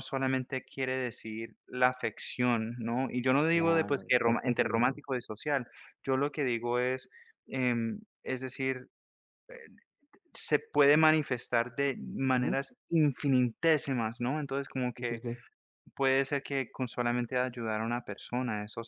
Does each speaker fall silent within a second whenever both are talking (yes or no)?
no